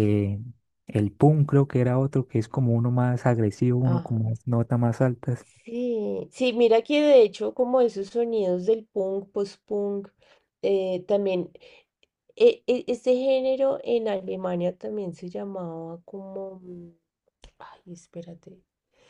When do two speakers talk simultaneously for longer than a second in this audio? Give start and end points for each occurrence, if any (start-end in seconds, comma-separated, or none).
none